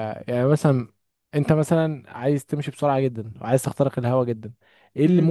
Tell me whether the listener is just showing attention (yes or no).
yes